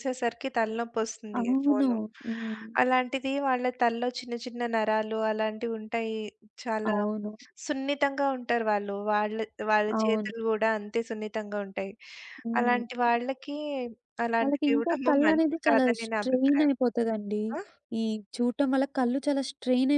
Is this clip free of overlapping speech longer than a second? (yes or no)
no